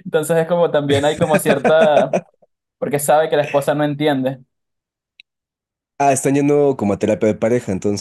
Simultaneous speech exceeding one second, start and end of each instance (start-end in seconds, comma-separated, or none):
none